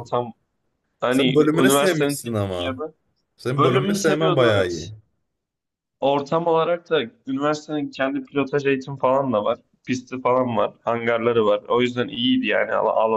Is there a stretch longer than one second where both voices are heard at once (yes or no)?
yes